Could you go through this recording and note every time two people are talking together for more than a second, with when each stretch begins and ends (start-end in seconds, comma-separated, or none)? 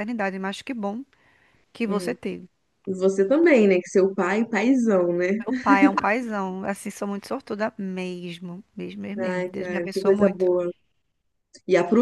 9.2-10.5